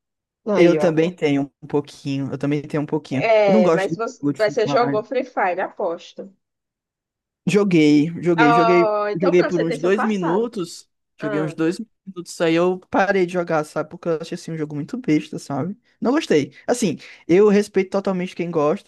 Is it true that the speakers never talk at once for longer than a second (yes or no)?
no